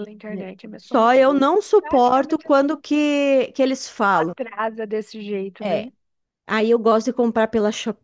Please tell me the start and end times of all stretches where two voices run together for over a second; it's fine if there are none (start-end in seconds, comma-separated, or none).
0.8-2.7